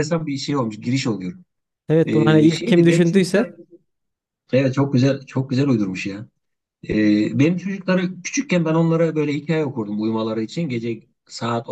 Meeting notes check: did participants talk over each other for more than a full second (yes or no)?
yes